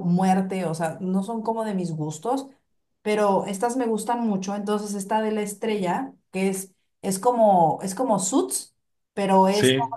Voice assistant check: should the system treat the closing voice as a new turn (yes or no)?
no